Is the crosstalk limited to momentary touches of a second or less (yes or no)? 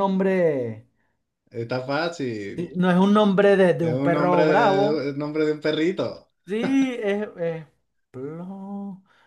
no